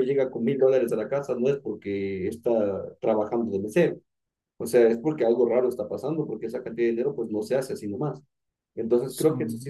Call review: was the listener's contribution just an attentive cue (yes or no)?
yes